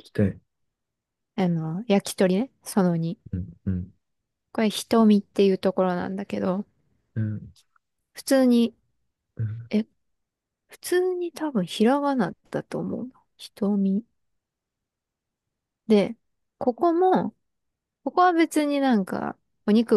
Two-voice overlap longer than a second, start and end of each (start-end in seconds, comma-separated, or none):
none